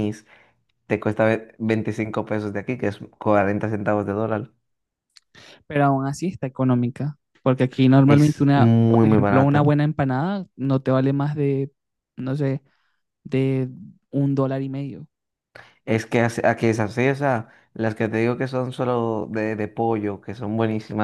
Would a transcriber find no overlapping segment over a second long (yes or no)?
no